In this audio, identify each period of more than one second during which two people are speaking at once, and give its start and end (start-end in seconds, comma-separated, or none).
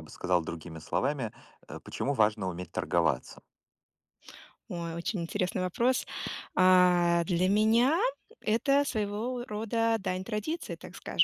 none